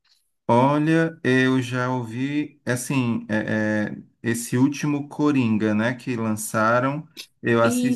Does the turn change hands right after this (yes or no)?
no